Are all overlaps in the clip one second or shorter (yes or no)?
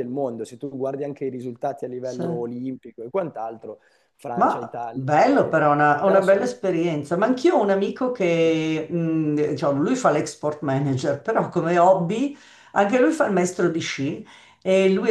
no